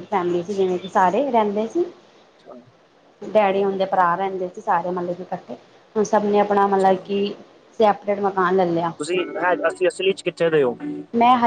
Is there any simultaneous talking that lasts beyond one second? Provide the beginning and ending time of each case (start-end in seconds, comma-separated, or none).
none